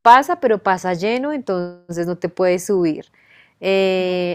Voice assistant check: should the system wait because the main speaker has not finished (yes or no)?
yes